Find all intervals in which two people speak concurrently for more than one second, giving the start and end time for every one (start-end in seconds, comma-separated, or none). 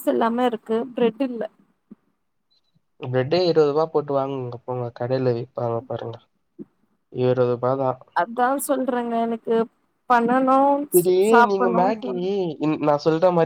none